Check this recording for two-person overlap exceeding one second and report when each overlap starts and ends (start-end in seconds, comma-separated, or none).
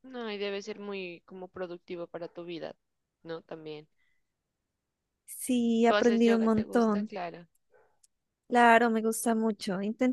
5.9-7.1